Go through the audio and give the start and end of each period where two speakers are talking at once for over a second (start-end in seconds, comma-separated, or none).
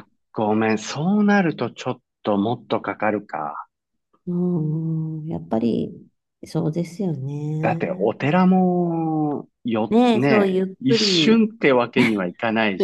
9.9-11.5